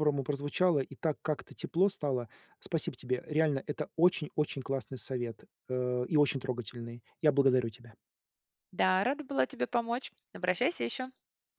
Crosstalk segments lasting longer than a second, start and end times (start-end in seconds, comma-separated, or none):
none